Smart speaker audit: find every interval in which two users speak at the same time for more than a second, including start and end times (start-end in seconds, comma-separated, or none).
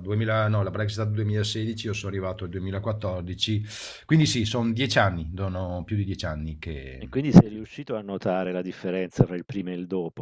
none